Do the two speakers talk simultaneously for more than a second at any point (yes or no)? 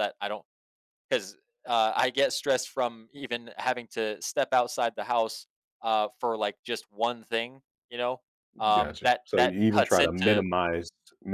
yes